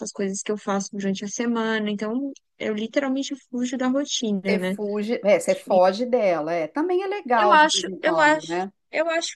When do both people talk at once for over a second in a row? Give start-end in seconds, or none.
7.4-8.7